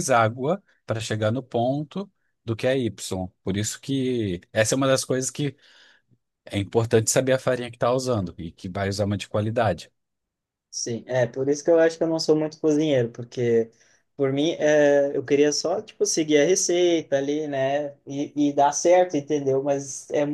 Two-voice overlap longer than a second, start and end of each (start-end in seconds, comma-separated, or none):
none